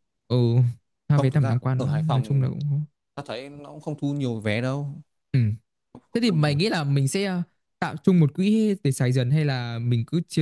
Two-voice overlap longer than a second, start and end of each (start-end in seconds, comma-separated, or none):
1.1-2.5